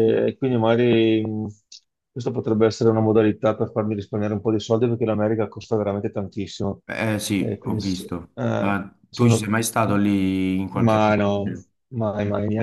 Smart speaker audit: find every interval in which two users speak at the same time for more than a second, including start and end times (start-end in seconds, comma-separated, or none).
7.4-9.5